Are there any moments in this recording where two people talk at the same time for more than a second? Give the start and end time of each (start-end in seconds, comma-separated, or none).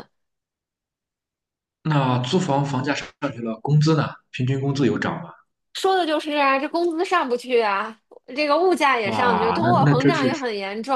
9.0-10.3